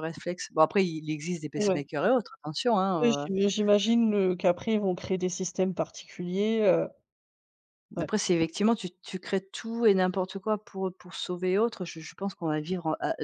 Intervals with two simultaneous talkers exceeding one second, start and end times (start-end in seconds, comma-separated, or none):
none